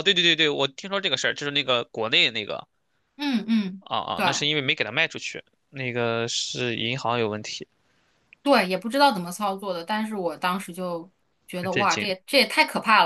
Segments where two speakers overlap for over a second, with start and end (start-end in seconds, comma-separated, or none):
none